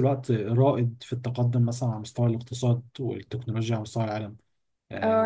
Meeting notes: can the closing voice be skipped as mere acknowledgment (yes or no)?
no